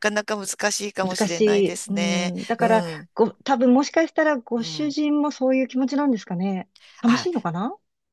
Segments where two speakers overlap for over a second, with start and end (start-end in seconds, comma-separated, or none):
1.0-3.1